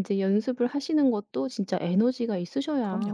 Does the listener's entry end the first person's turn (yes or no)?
yes